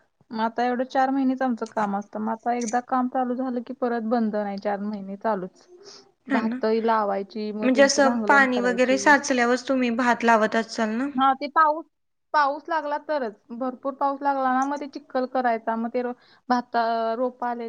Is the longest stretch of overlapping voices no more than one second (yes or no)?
no